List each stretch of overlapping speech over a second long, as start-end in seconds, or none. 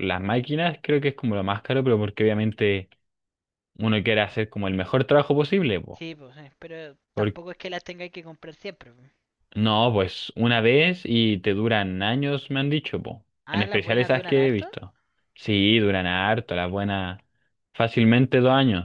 13.4-14.7